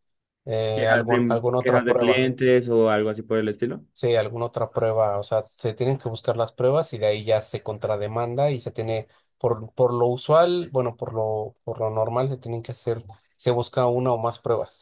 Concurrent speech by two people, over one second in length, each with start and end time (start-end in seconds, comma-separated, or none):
0.7-2.3